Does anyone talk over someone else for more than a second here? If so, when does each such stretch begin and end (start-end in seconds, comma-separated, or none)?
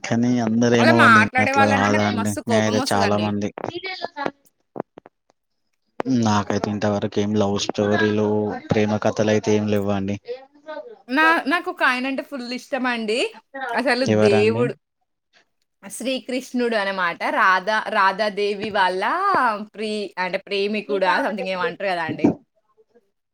0.8-3.3